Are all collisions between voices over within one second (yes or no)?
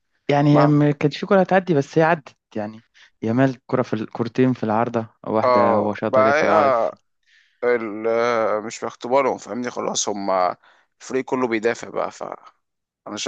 no